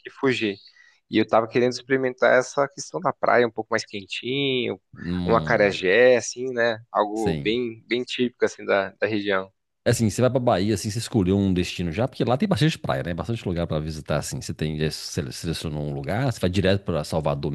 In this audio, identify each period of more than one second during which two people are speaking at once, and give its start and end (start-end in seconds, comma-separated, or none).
none